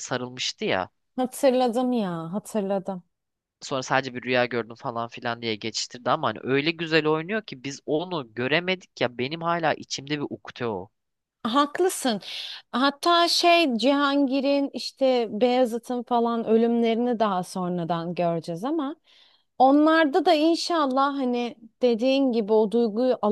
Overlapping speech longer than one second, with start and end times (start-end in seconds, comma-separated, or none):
none